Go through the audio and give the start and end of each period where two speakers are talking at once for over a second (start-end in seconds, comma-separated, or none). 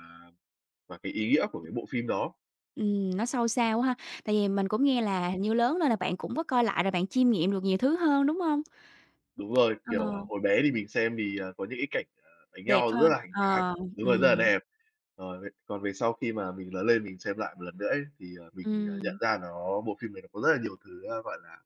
12.7-14.5